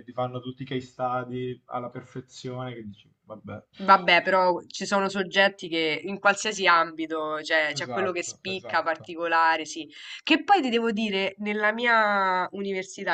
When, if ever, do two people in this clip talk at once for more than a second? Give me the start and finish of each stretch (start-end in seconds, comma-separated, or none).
7.8-9.1